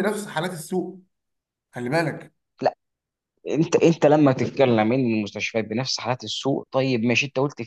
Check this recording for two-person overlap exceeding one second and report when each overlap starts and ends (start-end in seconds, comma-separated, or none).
none